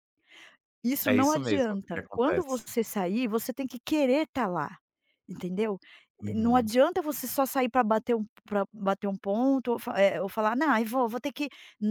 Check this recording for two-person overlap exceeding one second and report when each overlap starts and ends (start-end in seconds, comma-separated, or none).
1.0-2.7